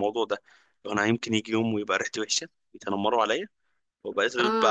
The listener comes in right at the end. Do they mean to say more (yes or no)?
no